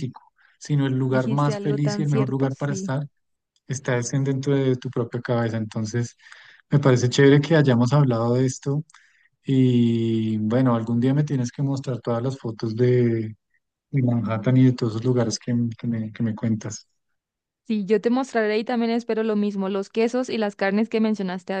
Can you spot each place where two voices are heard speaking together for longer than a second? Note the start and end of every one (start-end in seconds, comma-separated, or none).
1.1-2.9